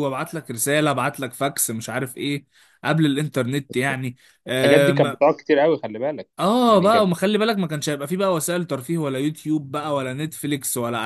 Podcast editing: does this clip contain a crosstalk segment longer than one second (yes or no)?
no